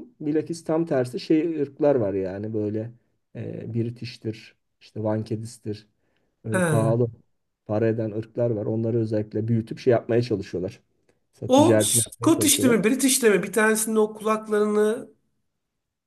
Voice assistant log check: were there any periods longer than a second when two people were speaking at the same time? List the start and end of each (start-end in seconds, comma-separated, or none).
11.5-12.8